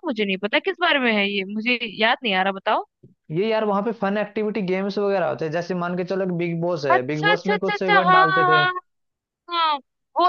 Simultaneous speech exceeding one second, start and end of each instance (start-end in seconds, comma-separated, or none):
6.9-8.7